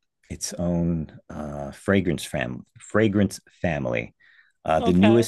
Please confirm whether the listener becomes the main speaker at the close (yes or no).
no